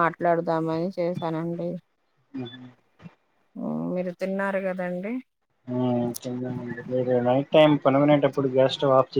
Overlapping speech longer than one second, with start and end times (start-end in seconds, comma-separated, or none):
none